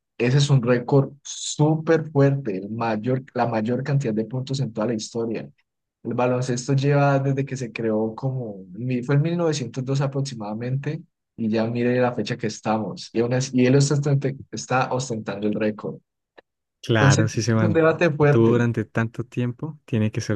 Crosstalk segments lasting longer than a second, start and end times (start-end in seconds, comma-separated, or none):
17.0-18.6